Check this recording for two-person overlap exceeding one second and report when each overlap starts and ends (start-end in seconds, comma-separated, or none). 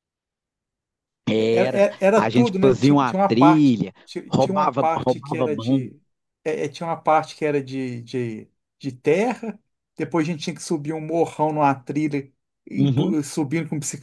1.3-5.9